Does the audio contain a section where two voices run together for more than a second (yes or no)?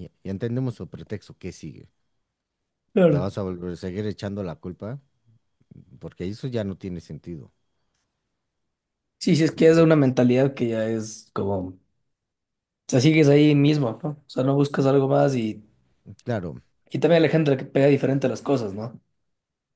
no